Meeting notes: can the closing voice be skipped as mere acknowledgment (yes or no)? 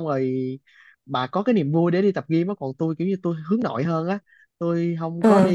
yes